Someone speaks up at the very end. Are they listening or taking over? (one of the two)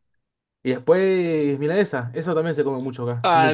taking over